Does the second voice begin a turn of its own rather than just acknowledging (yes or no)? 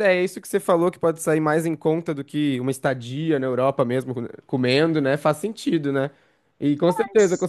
no